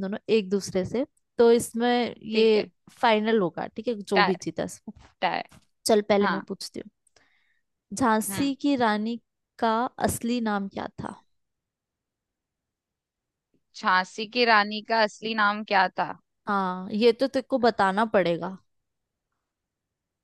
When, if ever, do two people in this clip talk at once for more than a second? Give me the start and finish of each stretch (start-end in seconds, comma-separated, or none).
none